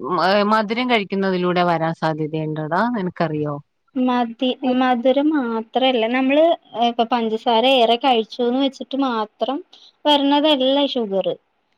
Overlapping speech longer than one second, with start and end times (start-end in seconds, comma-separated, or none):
none